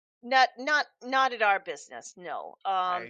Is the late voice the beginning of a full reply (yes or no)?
no